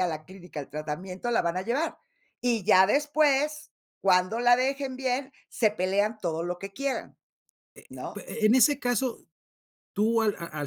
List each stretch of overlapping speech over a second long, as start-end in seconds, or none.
none